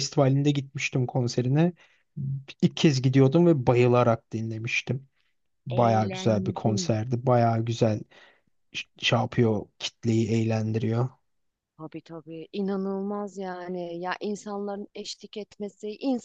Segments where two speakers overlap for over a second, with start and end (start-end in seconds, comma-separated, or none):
5.7-6.9